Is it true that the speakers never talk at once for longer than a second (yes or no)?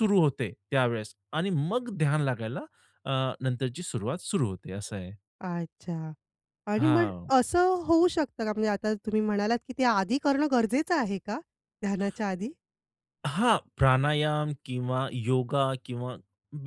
yes